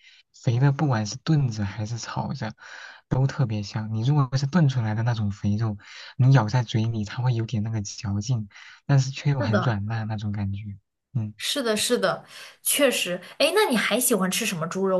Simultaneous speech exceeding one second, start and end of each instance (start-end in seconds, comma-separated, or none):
none